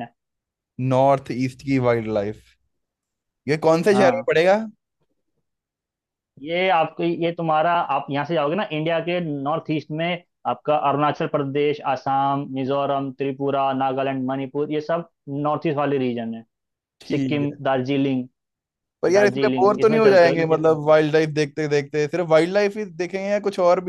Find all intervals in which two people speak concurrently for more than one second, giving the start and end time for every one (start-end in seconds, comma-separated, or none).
19.1-20.8